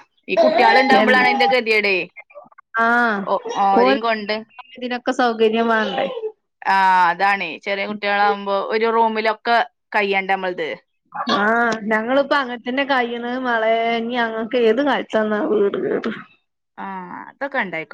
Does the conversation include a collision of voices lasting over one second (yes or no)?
no